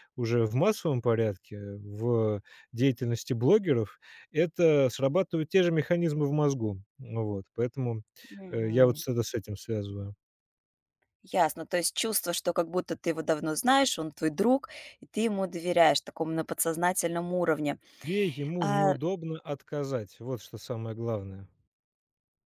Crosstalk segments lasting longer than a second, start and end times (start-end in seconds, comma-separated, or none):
none